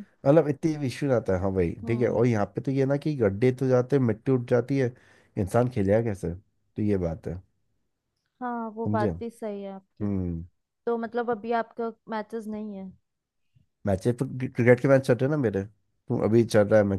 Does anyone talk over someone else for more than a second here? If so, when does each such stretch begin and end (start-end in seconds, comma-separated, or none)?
none